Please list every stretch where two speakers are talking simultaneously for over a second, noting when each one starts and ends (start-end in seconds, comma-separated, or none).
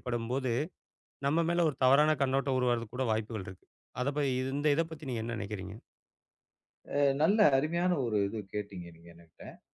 none